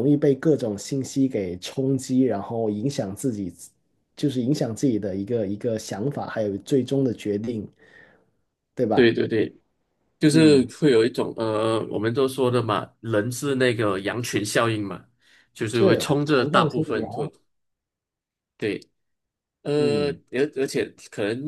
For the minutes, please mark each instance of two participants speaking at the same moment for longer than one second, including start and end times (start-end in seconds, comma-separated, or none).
15.7-17.1